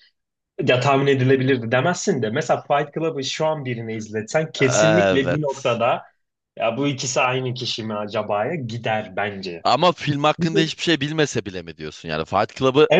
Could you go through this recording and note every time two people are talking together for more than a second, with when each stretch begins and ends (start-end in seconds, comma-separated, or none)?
4.6-5.8